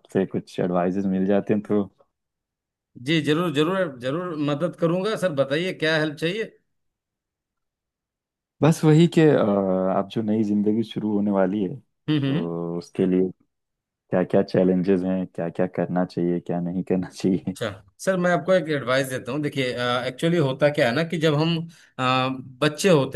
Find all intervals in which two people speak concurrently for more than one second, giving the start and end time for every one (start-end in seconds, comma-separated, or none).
none